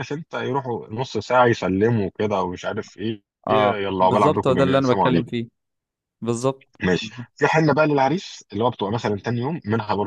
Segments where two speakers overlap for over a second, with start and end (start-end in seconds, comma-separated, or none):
3.5-5.3